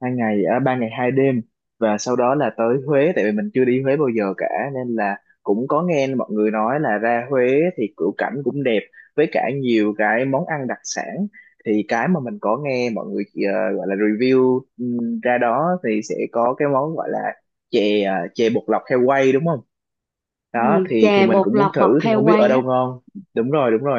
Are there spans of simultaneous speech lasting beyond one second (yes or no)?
yes